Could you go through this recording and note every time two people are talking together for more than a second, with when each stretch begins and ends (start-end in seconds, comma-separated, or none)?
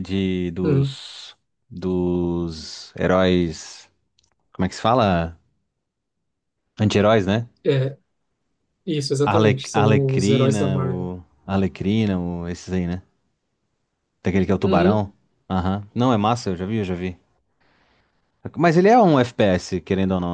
9.2-11.1